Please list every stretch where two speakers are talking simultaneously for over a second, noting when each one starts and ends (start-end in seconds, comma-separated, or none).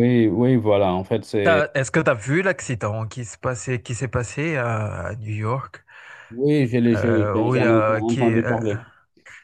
6.9-8.6